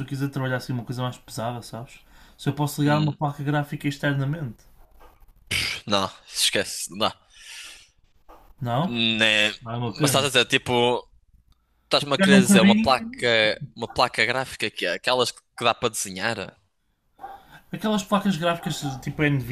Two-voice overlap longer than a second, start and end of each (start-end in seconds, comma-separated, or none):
12.0-13.3